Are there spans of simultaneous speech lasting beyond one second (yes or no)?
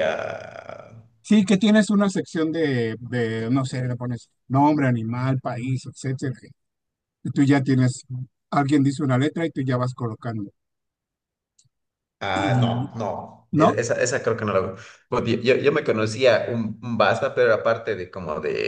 no